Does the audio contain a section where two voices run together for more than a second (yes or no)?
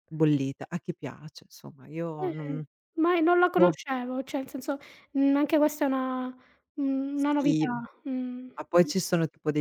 no